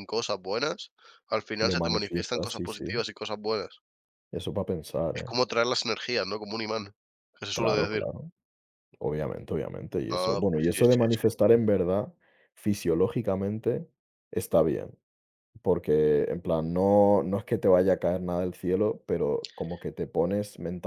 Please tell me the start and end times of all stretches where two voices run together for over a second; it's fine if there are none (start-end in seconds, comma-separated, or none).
1.6-3.0, 10.1-11.4